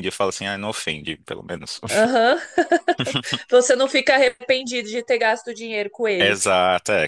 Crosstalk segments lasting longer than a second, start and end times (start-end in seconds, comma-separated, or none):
none